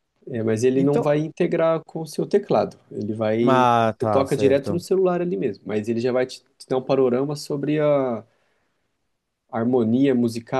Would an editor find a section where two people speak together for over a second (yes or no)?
yes